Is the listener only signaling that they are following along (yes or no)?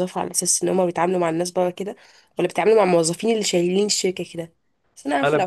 yes